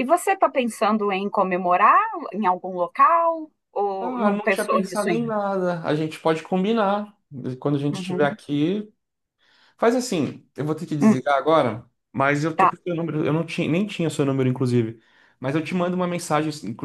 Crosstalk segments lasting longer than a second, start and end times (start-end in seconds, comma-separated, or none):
4.0-5.4